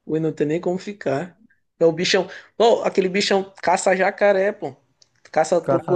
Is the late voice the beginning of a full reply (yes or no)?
no